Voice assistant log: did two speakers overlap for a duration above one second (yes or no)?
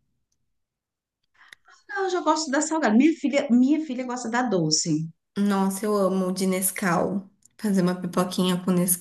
no